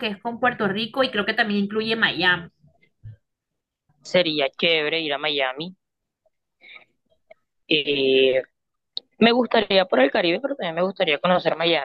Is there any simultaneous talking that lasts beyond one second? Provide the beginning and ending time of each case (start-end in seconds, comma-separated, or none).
none